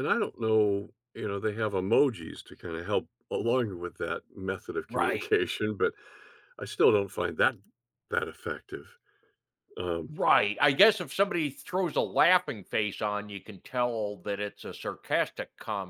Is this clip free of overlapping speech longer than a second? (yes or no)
yes